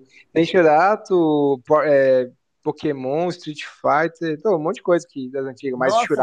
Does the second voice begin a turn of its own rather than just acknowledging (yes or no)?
yes